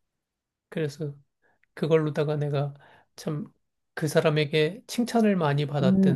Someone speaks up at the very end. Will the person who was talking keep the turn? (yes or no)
no